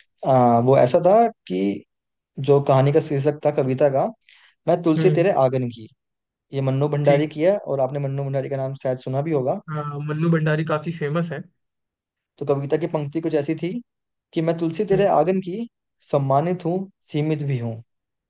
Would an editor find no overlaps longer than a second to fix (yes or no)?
yes